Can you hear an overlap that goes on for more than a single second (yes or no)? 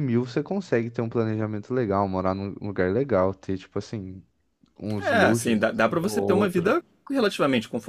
yes